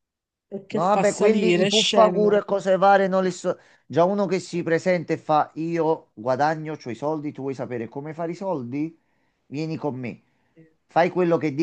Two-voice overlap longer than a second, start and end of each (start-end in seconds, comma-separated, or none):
0.7-2.4